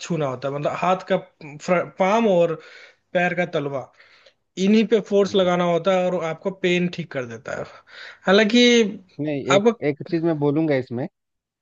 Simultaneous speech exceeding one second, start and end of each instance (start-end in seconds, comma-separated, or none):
none